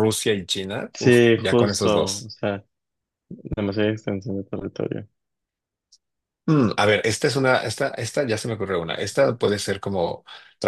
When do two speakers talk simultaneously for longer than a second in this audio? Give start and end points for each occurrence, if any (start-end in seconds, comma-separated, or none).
0.9-2.3